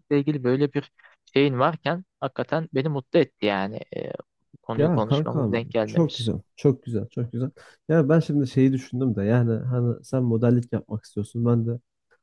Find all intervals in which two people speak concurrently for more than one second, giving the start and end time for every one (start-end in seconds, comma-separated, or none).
4.8-6.3